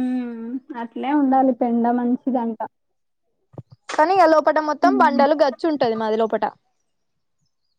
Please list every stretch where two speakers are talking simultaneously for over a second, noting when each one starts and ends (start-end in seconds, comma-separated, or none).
none